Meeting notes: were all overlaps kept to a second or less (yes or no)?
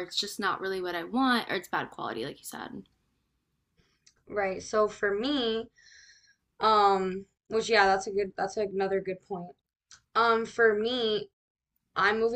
yes